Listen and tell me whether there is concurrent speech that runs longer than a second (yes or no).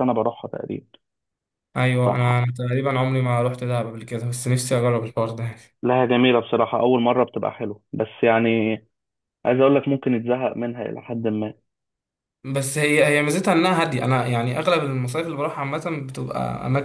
no